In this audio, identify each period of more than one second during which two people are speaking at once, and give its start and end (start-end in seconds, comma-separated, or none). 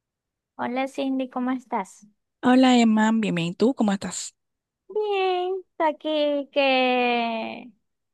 none